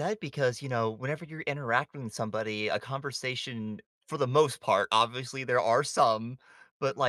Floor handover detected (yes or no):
no